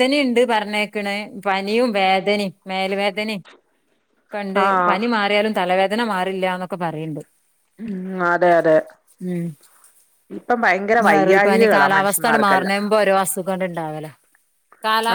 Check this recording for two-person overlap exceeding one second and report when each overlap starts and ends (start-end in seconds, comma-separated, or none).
11.1-12.7